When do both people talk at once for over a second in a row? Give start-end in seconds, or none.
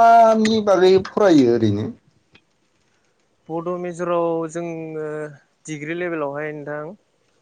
none